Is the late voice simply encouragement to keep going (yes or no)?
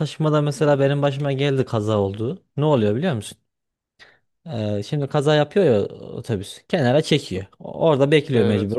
yes